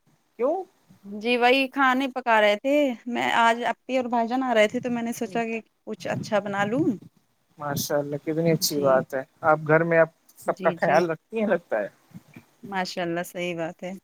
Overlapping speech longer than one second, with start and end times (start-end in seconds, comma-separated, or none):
none